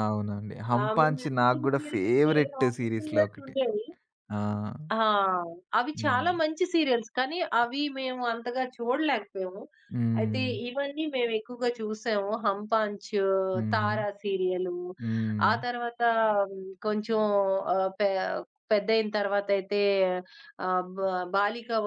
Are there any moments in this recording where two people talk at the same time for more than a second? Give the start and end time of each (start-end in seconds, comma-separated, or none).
0.8-3.5